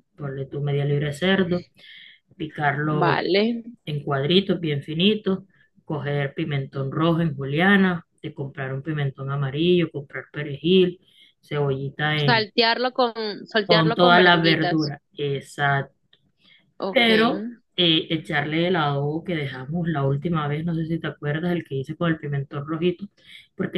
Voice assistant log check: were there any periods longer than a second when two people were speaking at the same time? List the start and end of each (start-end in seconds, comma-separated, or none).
13.7-14.9